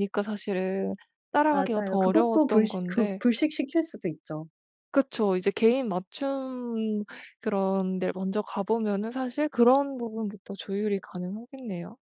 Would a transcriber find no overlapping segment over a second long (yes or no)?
no